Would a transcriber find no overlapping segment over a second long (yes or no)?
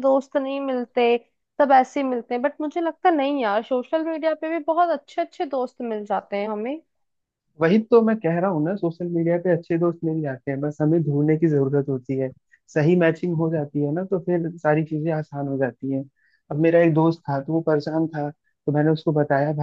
yes